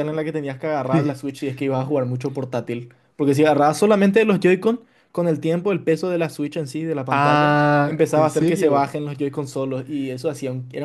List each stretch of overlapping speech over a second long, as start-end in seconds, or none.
7.1-8.9